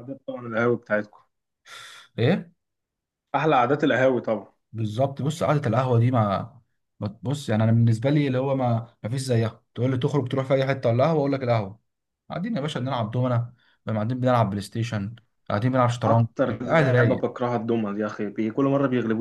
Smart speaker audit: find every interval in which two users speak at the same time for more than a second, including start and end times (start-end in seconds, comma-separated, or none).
15.9-17.3